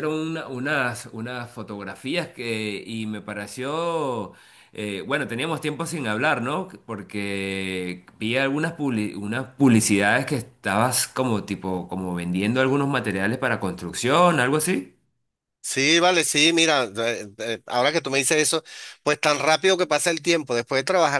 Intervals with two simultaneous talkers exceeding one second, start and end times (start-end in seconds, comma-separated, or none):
none